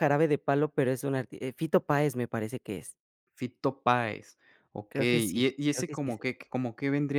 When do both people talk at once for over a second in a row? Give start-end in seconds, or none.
4.9-6.3